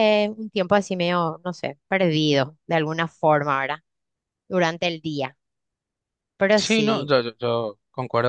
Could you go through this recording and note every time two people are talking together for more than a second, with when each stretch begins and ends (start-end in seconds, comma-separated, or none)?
none